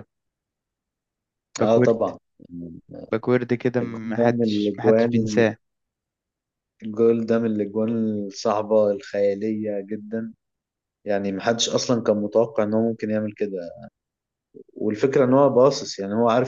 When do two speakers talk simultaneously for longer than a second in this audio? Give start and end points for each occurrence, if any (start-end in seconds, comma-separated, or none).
3.8-5.4